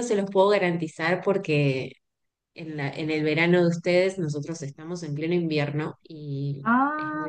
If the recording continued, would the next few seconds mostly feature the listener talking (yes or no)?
yes